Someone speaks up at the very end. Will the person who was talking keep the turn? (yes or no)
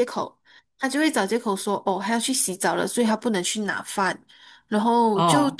yes